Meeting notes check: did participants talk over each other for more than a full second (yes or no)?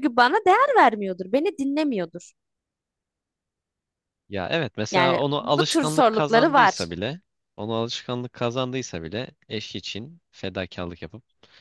yes